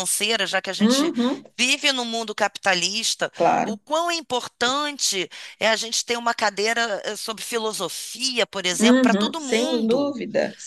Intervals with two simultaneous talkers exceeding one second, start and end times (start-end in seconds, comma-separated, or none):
8.8-10.2